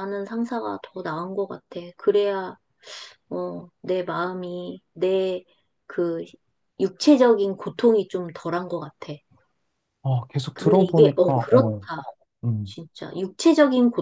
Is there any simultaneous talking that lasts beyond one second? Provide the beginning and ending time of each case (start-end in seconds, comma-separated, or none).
10.5-11.8